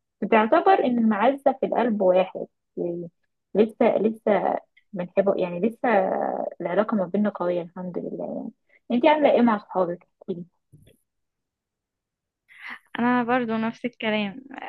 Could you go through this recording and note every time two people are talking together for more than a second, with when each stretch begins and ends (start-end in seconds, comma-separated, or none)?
none